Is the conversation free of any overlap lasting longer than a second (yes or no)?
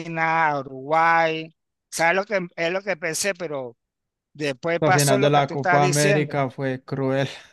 no